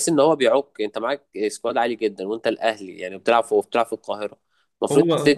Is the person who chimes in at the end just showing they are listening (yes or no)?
yes